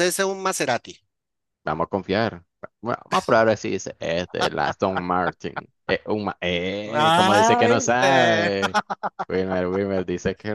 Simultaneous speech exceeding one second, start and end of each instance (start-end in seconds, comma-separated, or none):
6.8-8.5